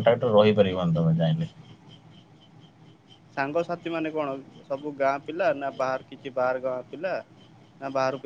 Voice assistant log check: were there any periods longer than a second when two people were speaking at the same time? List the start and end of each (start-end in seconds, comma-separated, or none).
none